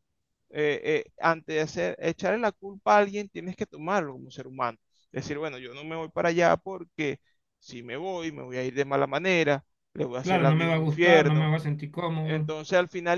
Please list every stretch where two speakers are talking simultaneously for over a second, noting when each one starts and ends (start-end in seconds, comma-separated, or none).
10.2-11.5